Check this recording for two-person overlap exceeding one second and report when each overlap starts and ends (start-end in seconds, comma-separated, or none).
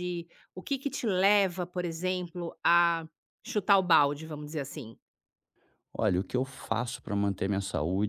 none